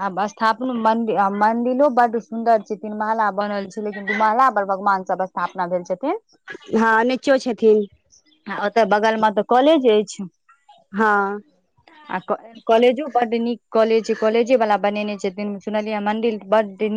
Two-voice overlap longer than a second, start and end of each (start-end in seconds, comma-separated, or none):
none